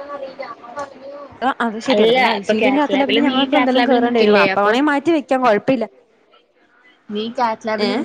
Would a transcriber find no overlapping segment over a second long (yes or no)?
no